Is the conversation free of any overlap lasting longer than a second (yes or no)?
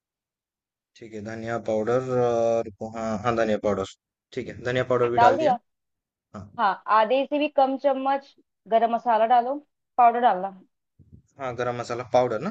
yes